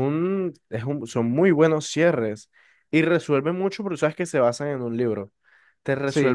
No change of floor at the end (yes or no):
yes